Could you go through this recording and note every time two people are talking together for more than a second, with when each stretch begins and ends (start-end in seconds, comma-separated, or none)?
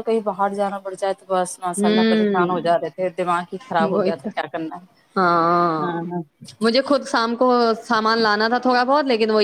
1.6-2.9